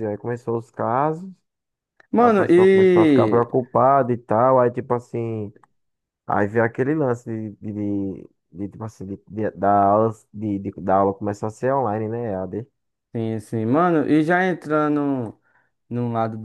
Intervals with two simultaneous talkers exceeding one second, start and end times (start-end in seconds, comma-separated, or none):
2.2-3.5